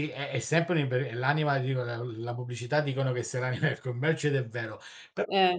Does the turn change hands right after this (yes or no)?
no